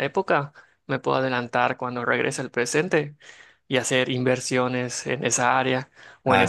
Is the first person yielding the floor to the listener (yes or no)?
yes